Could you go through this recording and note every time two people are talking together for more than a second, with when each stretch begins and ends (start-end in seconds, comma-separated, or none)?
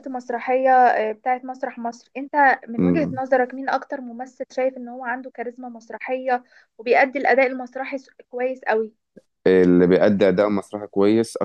none